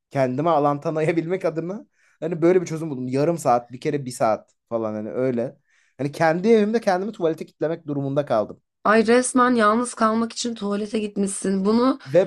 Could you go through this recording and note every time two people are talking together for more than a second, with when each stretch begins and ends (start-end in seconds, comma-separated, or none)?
none